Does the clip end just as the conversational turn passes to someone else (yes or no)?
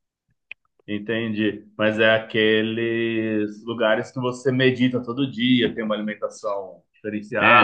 yes